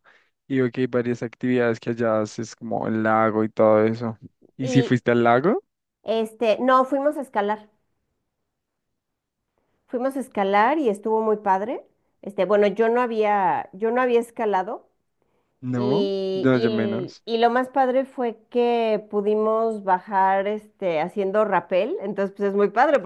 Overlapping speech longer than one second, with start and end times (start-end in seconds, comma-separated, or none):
15.8-17.2